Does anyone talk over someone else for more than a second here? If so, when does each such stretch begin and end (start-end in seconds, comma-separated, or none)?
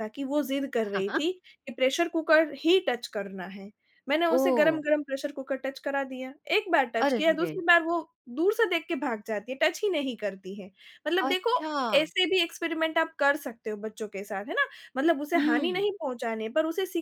none